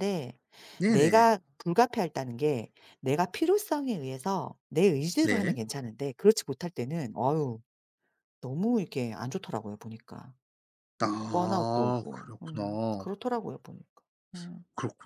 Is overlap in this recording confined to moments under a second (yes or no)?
no